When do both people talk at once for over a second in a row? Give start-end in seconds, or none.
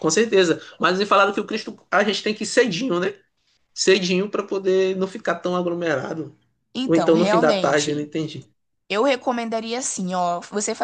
6.8-8.1